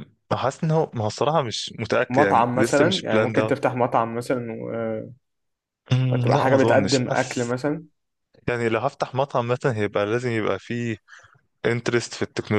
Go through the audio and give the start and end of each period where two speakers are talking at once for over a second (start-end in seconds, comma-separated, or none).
2.1-3.5, 6.1-7.5